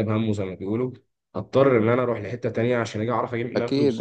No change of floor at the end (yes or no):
no